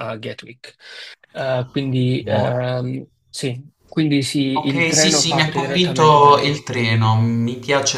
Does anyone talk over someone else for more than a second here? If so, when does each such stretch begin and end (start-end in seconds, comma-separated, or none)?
4.6-6.6